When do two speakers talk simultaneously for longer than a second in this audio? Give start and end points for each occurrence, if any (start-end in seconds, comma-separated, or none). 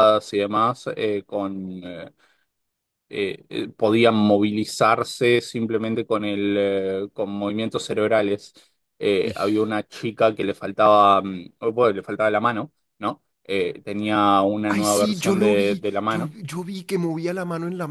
14.7-16.3